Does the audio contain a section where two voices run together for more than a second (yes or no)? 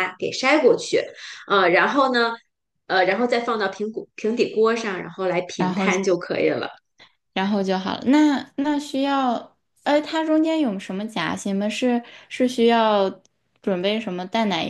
no